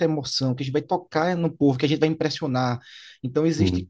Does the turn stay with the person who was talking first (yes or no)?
yes